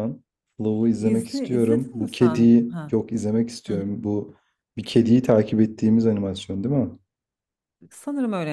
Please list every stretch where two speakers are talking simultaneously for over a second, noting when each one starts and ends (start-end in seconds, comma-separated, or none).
1.0-2.9